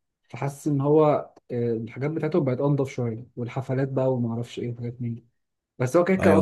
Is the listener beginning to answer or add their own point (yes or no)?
no